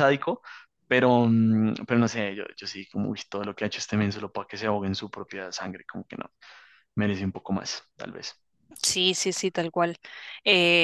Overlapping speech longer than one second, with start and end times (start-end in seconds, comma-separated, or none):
none